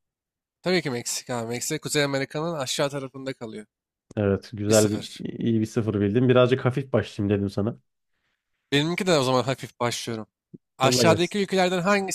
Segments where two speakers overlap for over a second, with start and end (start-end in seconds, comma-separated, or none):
none